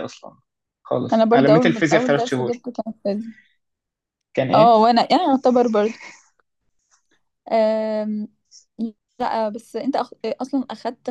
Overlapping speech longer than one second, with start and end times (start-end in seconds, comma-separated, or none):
1.1-2.5